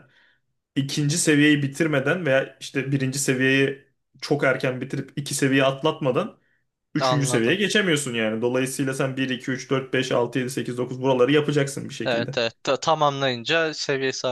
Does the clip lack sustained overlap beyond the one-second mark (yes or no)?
yes